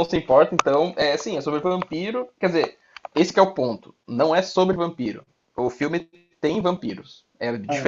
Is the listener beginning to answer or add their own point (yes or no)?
no